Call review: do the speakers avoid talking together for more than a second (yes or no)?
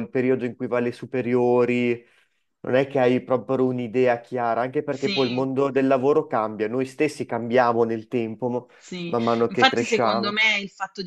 no